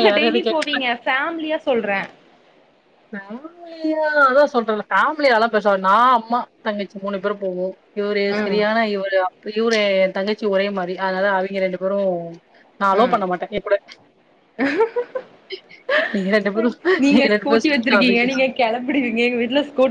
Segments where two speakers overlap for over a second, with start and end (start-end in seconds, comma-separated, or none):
none